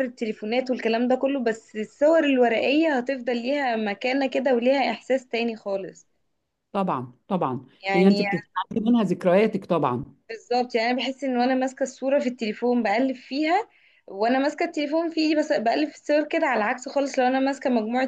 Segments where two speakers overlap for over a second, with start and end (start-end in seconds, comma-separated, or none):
none